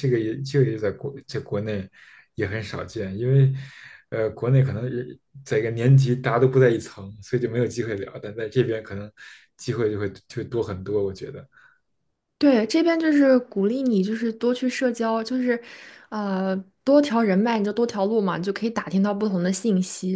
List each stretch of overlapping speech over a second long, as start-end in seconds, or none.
none